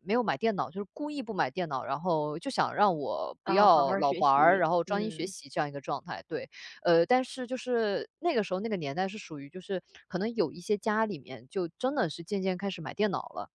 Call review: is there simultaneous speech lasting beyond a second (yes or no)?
yes